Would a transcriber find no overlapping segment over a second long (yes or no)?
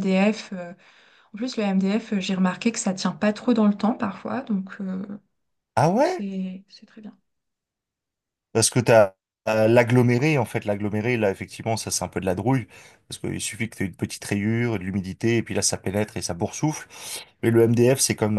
yes